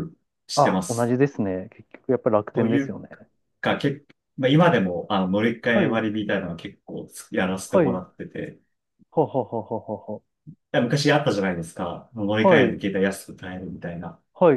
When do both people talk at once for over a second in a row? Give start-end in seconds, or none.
none